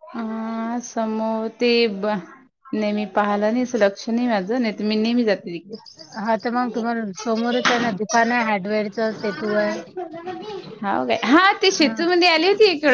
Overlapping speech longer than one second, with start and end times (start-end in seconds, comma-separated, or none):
none